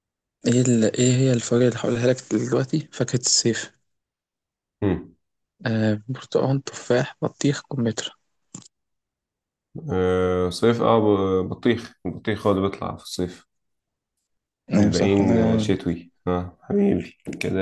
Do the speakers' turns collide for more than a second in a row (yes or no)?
yes